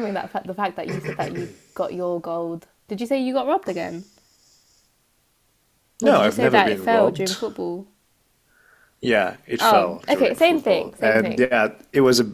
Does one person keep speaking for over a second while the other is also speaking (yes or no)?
yes